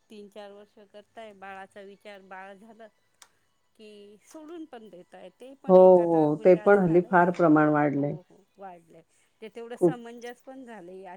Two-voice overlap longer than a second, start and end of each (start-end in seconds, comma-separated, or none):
5.7-8.2